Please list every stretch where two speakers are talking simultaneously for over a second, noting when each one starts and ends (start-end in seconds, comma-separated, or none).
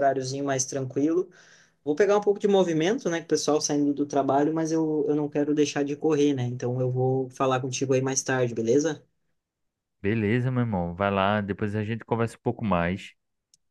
none